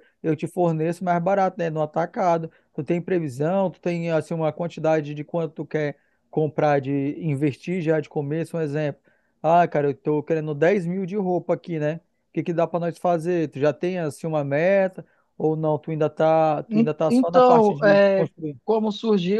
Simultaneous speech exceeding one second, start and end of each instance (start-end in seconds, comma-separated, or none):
16.7-18.6